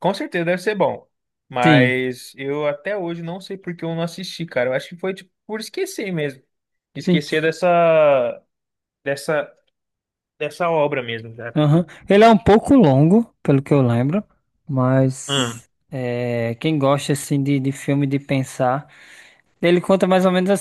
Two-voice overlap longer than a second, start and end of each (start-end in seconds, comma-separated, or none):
none